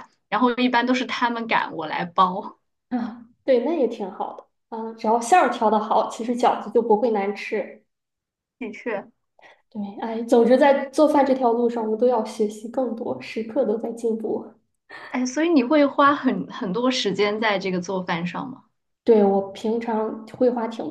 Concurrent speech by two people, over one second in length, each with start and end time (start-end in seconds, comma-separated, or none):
none